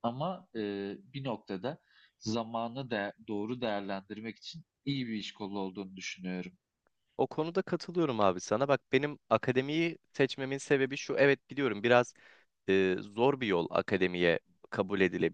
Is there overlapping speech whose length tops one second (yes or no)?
no